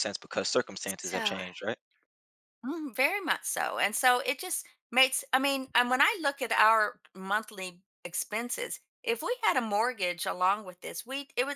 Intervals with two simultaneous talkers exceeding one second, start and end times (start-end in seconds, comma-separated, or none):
none